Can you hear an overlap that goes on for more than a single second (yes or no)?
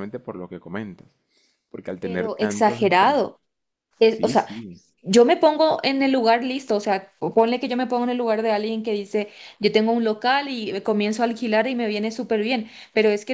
yes